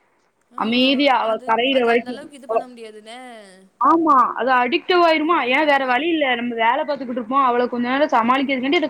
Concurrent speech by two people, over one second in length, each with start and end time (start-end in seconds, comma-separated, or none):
none